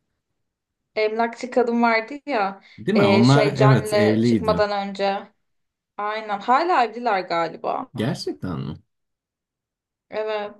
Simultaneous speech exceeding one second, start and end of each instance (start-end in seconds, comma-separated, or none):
2.8-4.6